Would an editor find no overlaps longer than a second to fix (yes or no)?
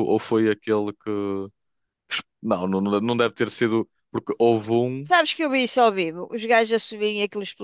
yes